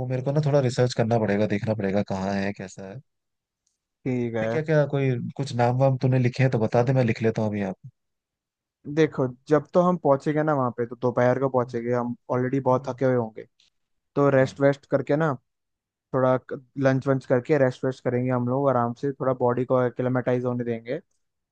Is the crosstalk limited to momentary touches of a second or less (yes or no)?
yes